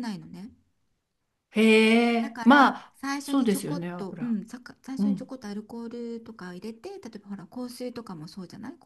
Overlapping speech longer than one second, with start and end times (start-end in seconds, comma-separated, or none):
2.2-4.4